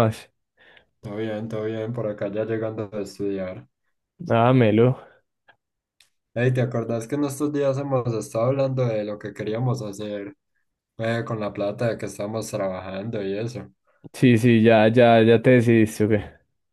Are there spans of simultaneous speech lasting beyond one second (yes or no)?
no